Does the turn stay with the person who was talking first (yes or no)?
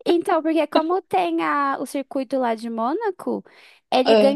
yes